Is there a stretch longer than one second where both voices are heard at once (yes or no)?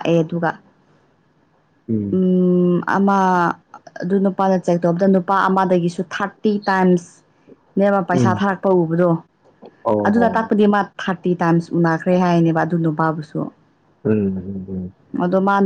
no